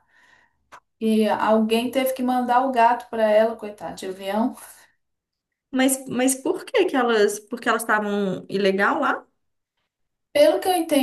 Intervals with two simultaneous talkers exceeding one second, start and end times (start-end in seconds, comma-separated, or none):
none